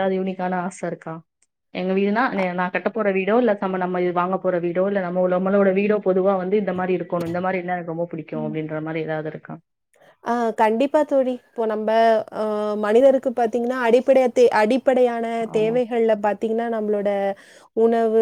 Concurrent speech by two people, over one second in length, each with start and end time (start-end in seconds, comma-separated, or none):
none